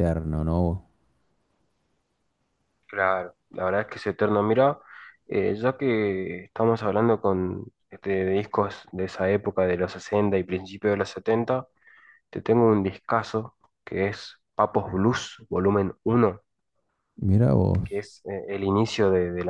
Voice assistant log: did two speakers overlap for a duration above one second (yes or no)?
no